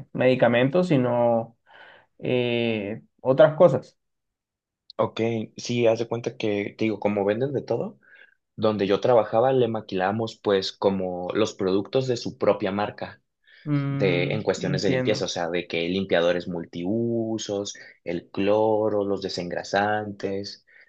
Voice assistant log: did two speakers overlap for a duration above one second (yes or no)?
yes